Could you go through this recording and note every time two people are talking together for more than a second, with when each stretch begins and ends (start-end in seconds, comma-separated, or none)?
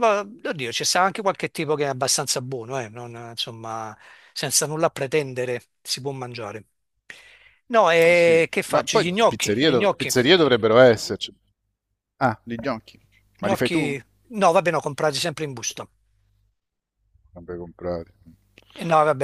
8.1-10.1